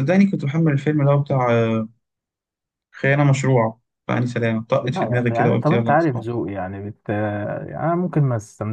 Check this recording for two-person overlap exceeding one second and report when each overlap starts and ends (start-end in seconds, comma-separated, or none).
4.8-6.3